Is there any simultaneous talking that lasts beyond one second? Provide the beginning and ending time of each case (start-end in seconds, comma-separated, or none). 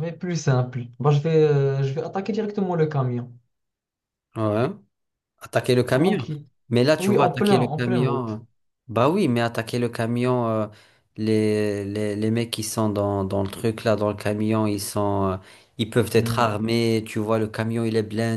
7.0-8.4